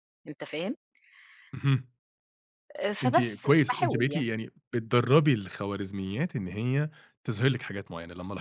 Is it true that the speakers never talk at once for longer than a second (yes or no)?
no